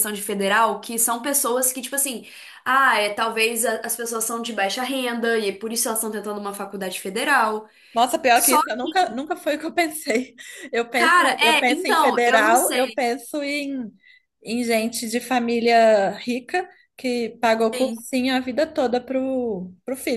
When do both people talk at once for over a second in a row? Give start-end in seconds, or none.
10.9-13.0